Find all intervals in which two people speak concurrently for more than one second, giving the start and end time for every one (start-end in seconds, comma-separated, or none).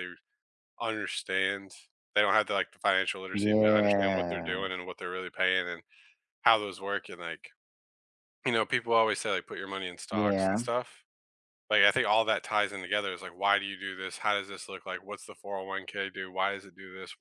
3.3-4.7